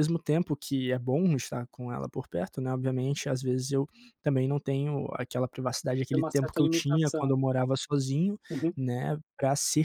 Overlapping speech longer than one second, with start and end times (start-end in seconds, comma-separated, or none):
6.1-7.3